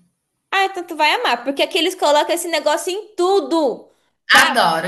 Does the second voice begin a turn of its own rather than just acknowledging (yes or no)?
yes